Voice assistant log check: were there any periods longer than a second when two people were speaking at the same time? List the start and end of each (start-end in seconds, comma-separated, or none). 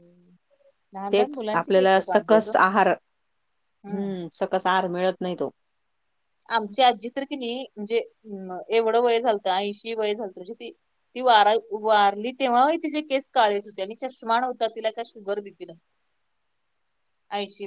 1.1-2.5